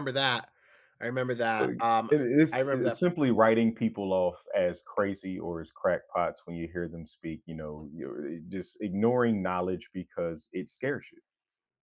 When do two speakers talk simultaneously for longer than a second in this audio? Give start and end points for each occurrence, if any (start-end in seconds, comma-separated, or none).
none